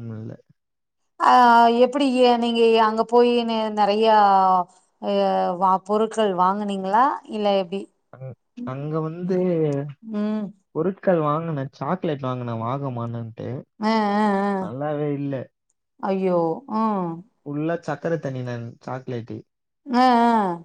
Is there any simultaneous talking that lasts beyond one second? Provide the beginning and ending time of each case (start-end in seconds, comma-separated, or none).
none